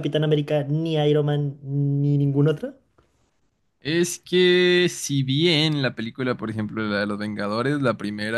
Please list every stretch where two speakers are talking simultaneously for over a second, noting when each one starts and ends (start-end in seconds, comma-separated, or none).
none